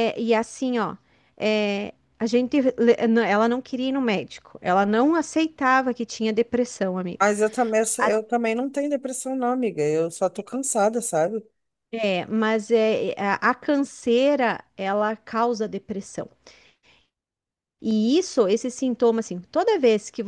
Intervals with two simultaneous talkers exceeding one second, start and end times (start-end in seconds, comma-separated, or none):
none